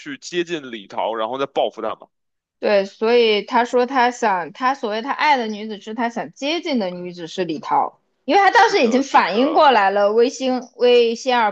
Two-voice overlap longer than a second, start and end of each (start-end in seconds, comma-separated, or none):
8.5-9.7